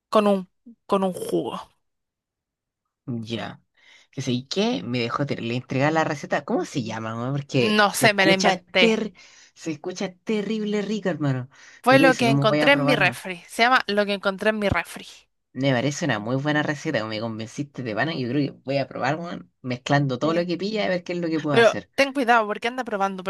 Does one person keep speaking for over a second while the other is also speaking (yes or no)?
yes